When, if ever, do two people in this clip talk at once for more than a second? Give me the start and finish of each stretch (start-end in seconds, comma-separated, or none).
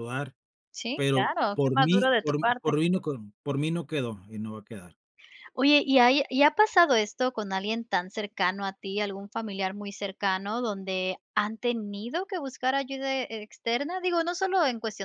0.9-2.8